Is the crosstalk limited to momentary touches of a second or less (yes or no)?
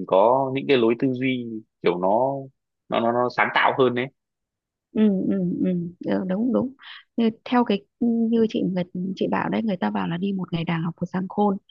yes